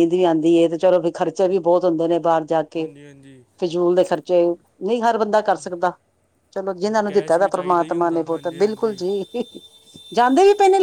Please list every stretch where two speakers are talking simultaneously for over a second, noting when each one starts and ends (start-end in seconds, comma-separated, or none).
7.1-8.9